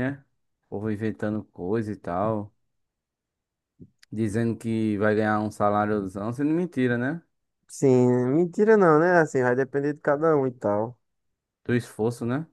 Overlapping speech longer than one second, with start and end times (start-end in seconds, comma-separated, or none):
none